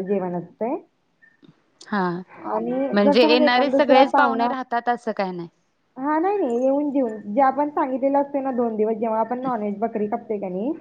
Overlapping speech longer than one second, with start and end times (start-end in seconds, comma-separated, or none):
2.9-4.5